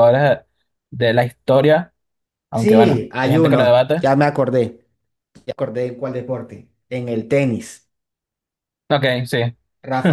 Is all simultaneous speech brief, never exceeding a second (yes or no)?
no